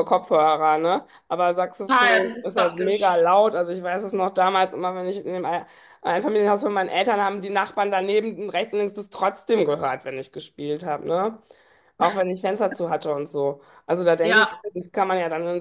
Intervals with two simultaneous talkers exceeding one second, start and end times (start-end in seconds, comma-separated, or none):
1.9-3.2